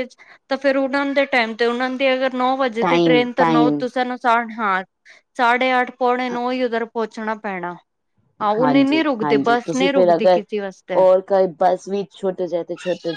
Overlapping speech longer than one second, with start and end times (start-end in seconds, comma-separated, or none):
8.6-10.4